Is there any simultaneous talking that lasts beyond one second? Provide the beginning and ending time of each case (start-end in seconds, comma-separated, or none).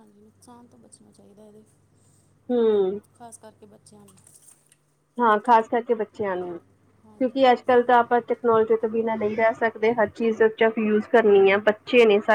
none